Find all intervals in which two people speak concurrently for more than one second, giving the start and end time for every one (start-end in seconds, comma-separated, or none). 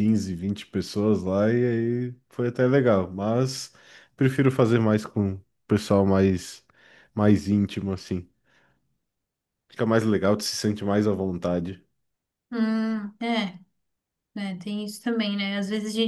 none